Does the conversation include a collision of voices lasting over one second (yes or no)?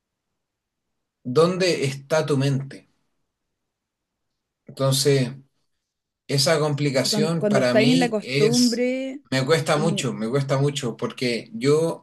yes